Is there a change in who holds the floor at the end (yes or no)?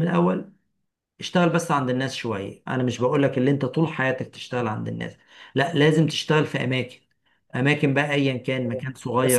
yes